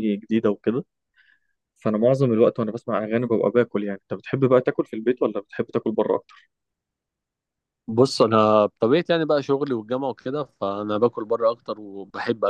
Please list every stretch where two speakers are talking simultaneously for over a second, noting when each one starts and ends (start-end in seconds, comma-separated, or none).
none